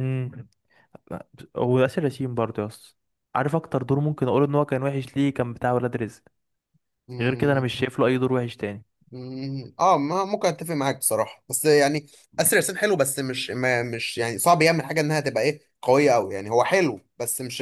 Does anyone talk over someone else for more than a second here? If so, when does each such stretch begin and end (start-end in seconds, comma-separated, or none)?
none